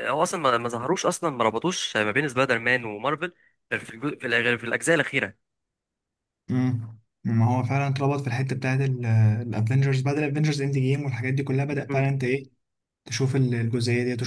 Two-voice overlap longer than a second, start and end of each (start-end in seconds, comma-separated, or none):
none